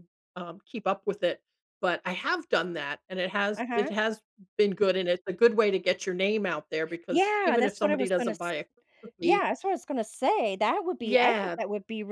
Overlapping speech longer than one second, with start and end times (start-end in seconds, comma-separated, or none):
7.1-8.3